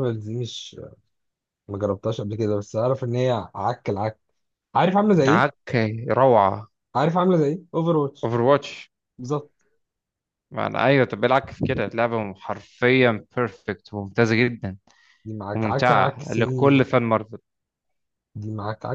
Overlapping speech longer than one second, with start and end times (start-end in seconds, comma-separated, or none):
15.5-16.9